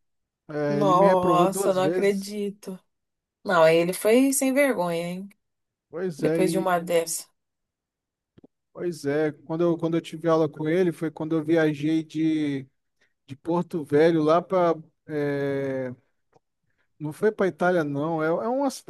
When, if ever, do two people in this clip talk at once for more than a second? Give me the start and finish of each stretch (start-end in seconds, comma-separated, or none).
0.7-2.3